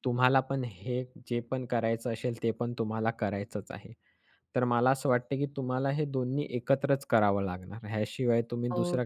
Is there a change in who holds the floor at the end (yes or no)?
no